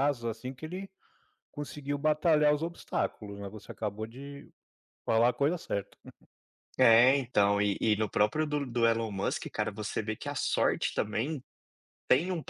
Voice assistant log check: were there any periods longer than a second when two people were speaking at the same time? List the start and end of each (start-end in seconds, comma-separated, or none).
none